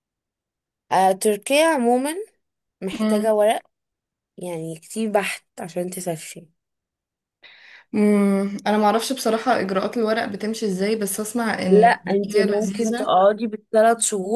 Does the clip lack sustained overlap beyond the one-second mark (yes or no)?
no